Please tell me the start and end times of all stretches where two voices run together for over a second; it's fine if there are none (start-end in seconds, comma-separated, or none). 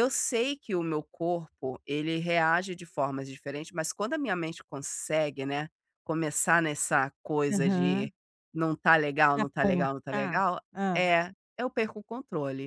9.3-11.1